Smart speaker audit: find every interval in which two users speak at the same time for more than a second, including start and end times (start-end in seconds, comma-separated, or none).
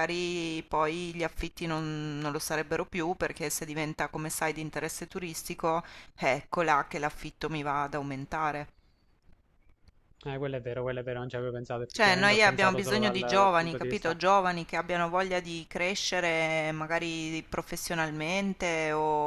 11.9-14.2